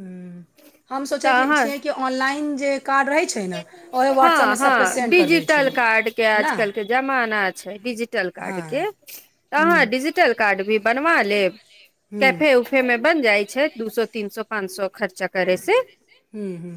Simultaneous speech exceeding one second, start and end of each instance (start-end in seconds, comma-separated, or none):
4.2-5.7